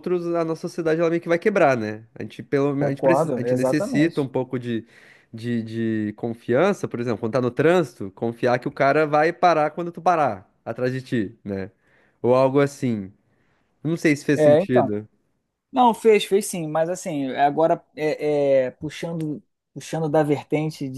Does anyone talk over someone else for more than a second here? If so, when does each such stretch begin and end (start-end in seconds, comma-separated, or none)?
2.8-4.3